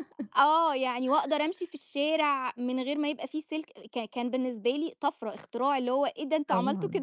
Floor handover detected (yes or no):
yes